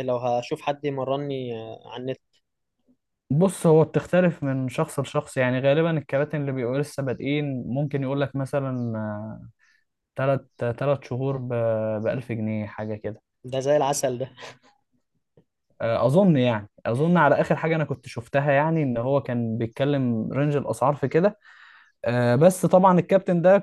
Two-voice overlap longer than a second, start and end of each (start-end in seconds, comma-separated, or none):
none